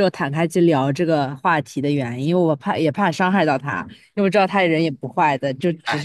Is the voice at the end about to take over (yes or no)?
yes